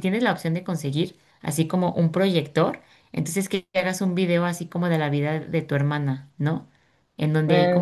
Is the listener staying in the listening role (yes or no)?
yes